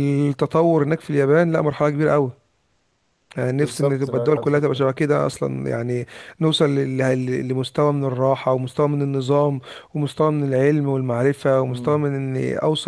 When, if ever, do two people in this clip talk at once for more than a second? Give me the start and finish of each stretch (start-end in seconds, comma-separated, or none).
3.5-4.8